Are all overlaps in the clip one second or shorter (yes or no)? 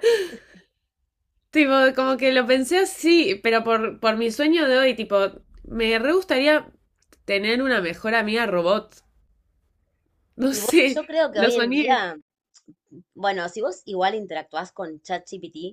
no